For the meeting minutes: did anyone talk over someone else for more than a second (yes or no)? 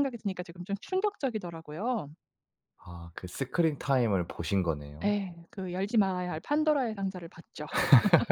no